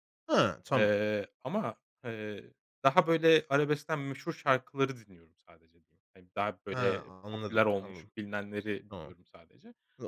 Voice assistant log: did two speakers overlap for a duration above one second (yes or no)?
yes